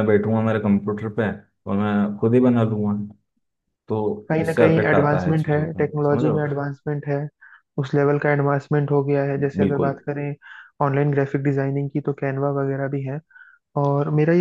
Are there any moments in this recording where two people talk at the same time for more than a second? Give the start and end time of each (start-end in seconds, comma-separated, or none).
4.3-6.5